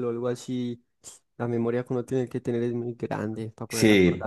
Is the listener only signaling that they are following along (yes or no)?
no